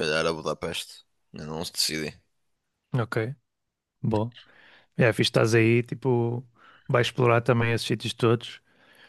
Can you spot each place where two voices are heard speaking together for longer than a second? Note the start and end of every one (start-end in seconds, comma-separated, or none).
none